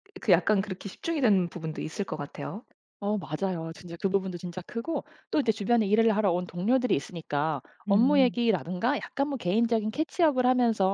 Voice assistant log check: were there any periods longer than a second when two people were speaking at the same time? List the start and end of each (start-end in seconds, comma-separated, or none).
none